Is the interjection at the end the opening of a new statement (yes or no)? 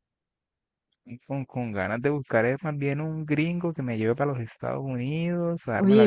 yes